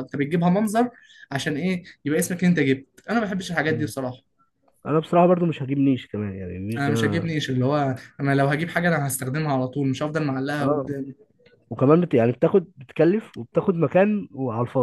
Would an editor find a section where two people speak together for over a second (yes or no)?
no